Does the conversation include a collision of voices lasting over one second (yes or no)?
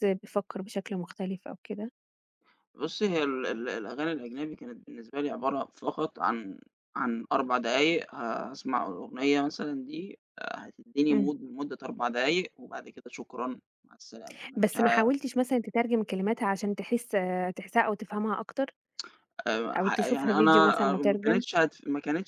yes